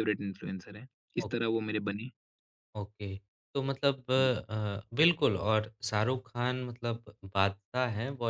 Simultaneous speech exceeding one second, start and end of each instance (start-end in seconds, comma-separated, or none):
none